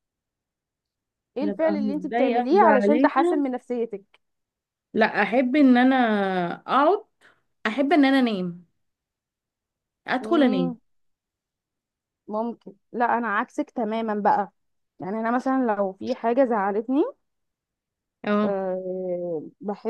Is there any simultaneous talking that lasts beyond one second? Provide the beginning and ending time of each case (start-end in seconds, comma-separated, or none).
1.4-3.5